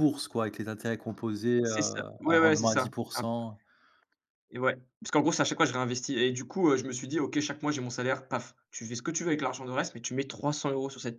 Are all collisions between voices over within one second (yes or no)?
no